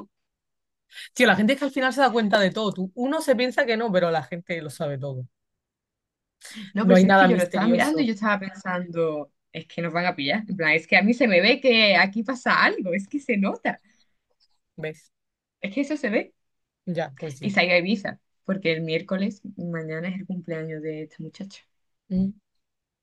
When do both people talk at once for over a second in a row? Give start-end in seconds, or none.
6.8-8.1